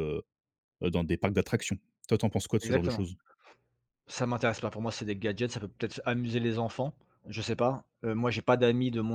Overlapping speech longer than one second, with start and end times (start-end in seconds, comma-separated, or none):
none